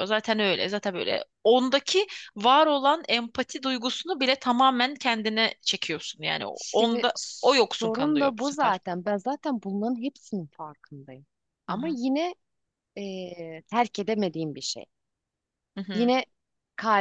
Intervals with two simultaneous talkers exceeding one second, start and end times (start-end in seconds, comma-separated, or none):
6.5-8.8